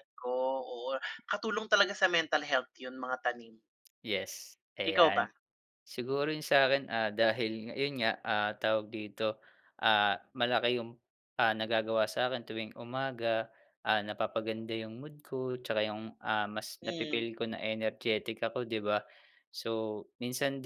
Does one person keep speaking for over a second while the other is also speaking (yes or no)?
no